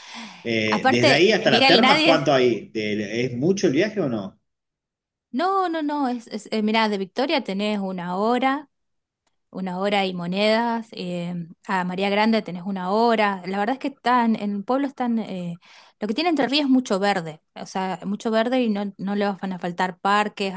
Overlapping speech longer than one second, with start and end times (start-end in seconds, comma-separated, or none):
0.7-2.2